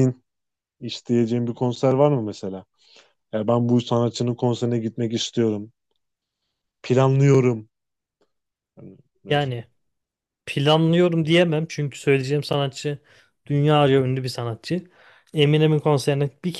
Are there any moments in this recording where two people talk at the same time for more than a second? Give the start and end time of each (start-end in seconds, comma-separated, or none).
none